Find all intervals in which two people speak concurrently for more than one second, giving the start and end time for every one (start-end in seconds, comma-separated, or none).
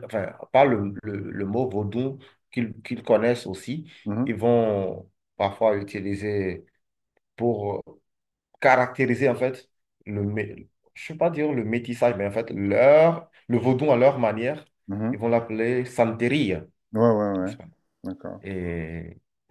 none